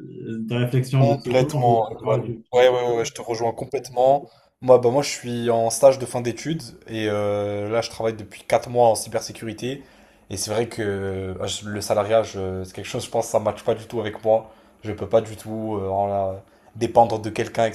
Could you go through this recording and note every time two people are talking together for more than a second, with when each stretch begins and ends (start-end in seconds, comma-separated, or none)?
1.0-2.7